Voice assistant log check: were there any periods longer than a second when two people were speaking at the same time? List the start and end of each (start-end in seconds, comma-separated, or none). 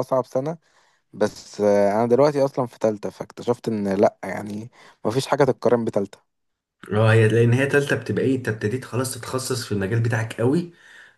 none